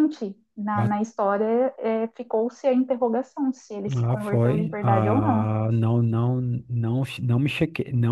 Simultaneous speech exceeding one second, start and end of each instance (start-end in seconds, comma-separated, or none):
4.0-5.5